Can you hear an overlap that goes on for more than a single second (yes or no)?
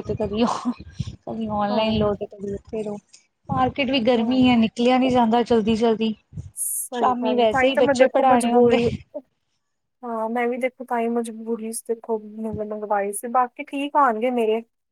yes